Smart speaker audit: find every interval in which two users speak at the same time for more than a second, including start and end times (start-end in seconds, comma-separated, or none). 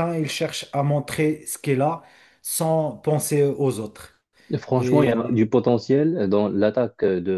none